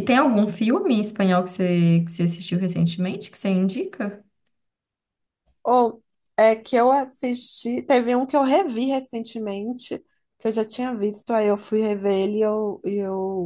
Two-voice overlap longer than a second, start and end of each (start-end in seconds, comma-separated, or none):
none